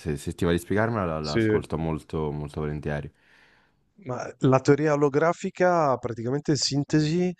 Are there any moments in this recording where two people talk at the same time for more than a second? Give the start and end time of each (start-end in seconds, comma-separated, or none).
none